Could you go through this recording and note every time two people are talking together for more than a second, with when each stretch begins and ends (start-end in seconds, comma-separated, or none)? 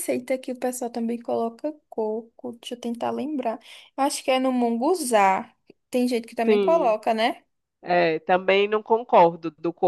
none